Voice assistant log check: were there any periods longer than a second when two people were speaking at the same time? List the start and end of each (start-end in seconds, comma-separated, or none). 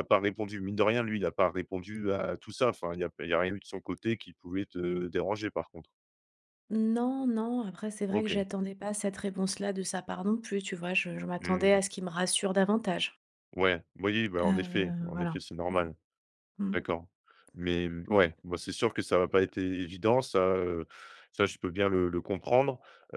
14.4-15.9